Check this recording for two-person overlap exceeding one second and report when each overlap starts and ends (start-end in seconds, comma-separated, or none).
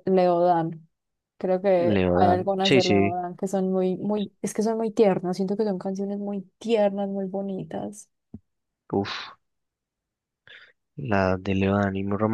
1.8-3.1